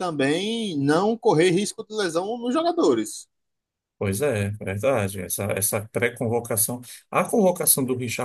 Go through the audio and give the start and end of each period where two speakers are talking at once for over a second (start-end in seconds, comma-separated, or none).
none